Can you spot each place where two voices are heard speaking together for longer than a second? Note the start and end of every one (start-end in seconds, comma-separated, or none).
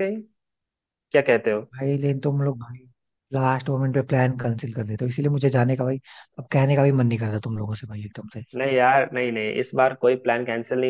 none